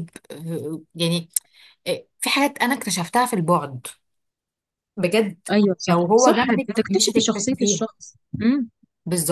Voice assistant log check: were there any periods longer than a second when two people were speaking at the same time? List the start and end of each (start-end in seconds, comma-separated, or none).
5.9-7.8